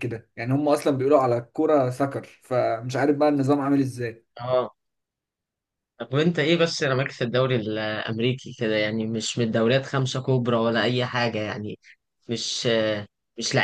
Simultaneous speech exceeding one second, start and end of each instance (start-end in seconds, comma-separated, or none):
none